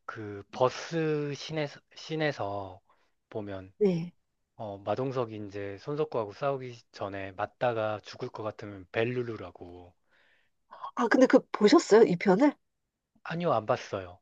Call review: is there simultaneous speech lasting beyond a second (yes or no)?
no